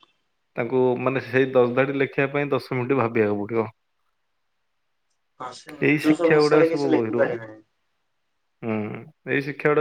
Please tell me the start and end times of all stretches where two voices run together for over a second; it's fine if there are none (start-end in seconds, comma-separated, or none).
5.9-7.4